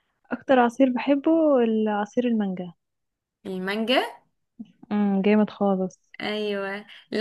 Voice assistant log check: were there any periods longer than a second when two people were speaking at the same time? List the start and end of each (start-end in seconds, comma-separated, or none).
none